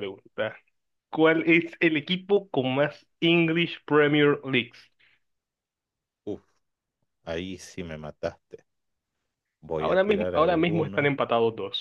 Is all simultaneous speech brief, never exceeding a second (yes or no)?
no